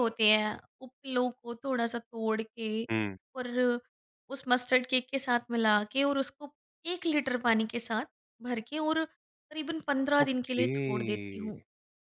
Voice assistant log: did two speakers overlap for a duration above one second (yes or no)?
yes